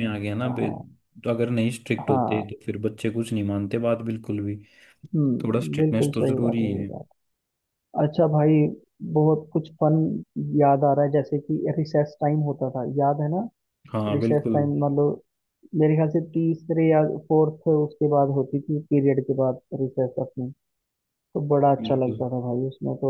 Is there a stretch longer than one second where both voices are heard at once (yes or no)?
yes